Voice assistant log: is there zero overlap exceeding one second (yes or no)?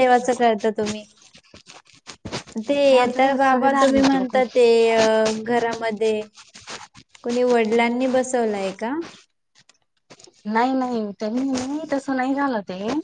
no